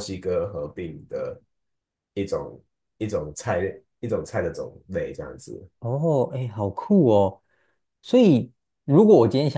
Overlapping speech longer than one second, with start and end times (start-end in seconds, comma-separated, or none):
none